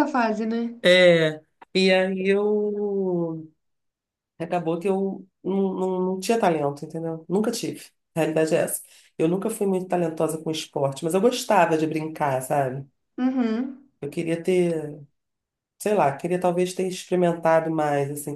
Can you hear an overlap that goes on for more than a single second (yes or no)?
no